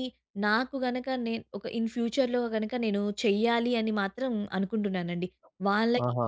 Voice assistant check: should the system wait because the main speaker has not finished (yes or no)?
yes